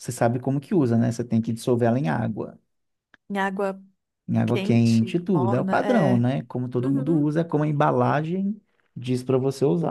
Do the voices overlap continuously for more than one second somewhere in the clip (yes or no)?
yes